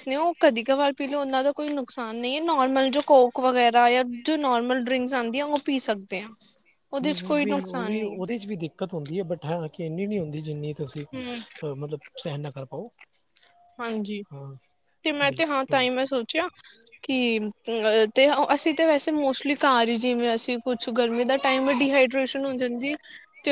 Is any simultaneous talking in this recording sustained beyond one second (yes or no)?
no